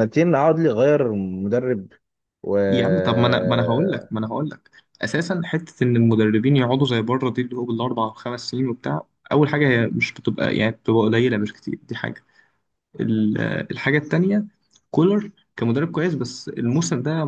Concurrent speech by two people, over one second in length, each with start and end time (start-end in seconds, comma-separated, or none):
none